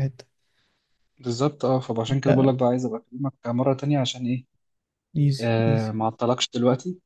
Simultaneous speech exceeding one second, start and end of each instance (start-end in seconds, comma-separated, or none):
none